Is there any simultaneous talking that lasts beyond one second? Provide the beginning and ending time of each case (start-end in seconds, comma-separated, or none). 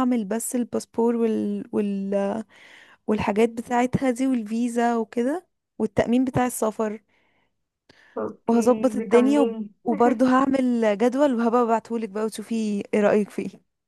8.5-9.7